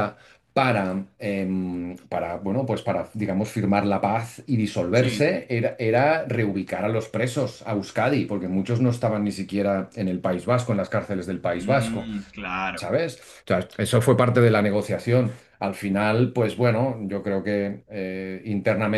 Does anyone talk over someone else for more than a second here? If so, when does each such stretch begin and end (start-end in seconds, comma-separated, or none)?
none